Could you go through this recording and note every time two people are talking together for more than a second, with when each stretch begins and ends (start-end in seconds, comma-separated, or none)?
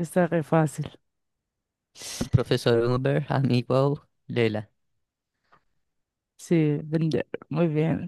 none